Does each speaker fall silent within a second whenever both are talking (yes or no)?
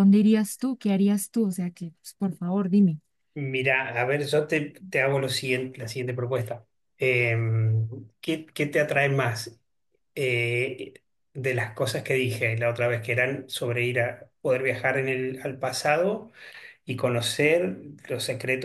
yes